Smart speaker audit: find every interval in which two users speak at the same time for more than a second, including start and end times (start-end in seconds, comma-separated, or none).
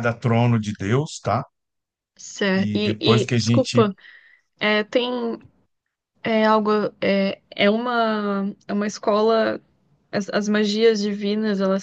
2.5-3.9